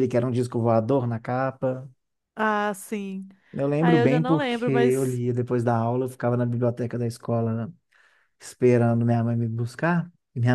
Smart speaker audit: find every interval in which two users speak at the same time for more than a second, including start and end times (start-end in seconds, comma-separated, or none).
3.8-5.2